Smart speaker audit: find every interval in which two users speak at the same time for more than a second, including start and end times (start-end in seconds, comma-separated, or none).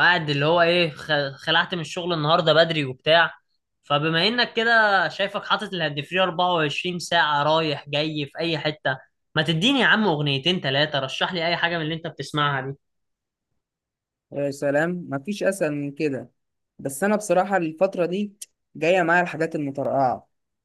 none